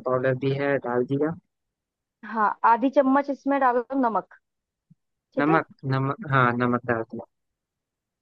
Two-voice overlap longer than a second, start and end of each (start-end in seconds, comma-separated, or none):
none